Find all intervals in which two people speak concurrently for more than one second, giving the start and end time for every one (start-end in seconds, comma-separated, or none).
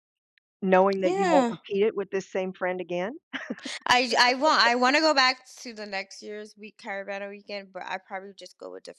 none